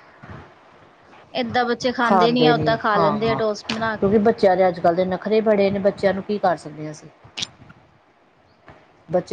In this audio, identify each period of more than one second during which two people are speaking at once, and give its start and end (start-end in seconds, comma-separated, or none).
none